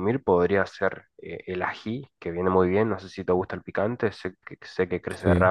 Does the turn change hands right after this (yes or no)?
no